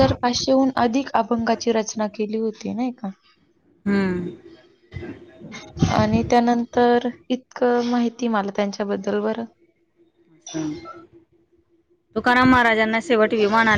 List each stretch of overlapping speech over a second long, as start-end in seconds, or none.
none